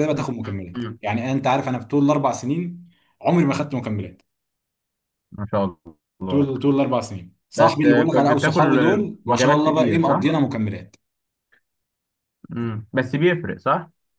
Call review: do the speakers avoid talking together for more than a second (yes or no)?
no